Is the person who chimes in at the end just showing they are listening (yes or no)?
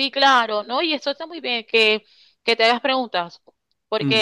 yes